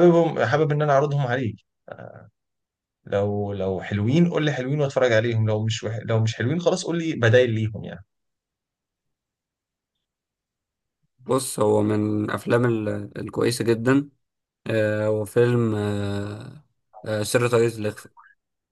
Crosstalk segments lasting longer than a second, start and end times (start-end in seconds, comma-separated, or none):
none